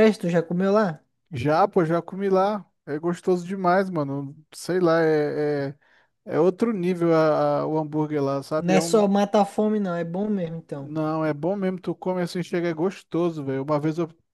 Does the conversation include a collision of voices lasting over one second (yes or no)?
no